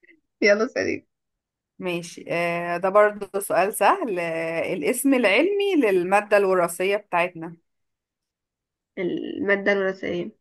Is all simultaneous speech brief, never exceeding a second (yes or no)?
yes